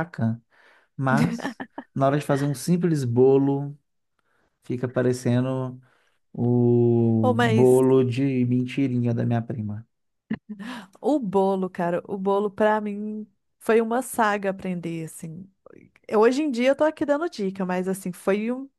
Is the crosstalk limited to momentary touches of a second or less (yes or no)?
yes